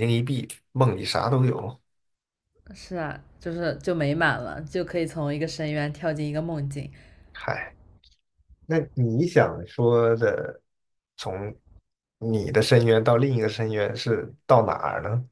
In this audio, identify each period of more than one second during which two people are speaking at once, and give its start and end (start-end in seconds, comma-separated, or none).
none